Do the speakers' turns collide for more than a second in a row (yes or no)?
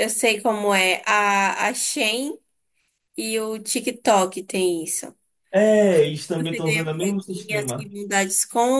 yes